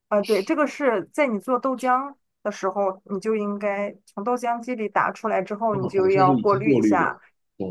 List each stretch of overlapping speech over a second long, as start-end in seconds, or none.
5.7-7.2